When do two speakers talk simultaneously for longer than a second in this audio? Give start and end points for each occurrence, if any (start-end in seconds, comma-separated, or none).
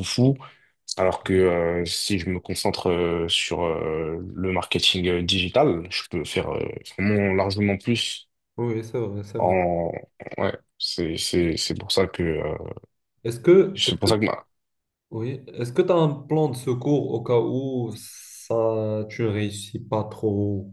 none